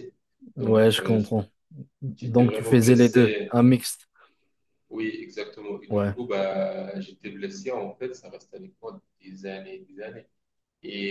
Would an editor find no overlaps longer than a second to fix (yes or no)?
no